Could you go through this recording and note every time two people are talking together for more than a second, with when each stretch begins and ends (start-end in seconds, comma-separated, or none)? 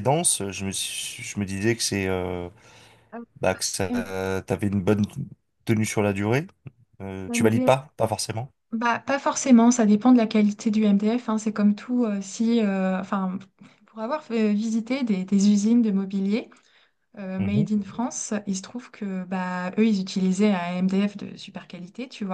none